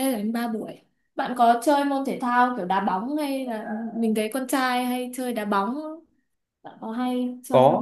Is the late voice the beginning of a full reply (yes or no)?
yes